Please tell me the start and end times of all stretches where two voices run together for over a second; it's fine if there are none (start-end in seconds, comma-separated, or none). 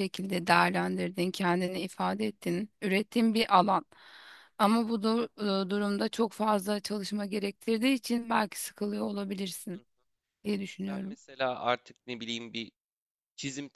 none